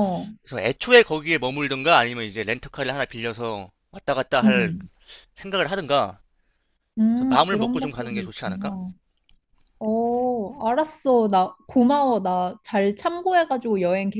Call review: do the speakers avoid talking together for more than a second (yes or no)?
no